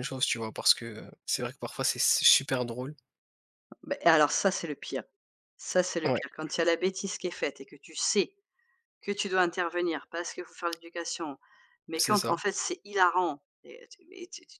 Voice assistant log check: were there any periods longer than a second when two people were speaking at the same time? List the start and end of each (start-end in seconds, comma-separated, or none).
none